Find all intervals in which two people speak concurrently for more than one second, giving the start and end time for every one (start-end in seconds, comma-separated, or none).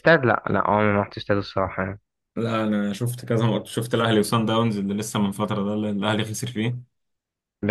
none